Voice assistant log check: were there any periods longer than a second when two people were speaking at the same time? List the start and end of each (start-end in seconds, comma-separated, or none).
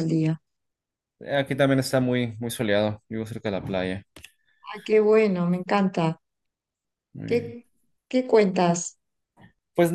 none